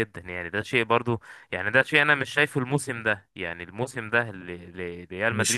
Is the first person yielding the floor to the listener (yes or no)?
no